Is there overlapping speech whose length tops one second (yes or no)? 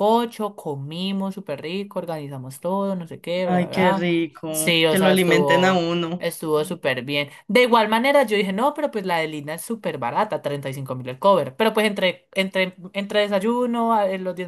yes